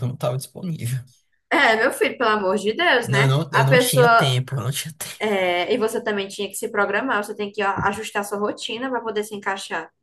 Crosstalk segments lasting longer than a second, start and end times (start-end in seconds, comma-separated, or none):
3.0-4.3